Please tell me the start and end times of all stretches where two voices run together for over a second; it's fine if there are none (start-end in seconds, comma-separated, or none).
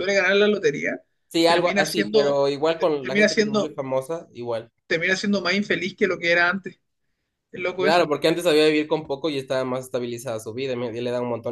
1.4-3.8